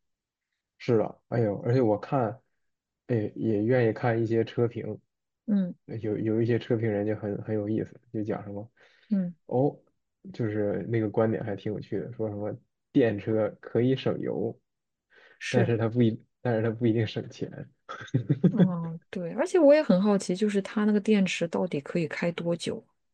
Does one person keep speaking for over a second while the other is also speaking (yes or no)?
no